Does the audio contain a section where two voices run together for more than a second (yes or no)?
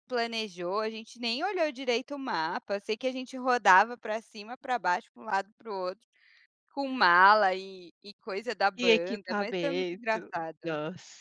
yes